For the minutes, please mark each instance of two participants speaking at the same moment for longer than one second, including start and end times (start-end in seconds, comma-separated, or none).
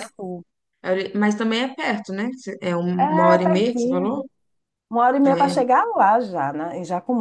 3.0-4.2